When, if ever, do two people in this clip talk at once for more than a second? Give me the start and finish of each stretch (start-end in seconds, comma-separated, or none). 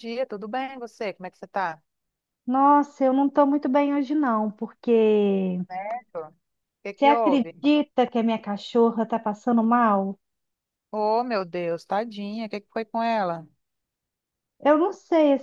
none